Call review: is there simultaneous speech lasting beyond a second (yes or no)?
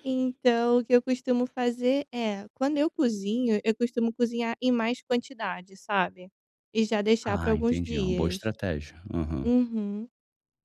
yes